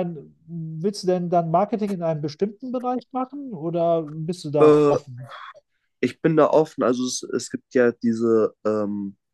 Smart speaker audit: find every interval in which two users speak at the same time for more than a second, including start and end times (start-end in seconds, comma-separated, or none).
none